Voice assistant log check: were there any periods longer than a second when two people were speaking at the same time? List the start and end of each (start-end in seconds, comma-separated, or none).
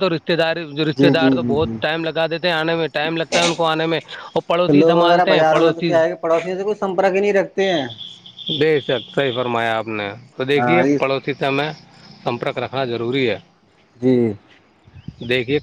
4.7-5.9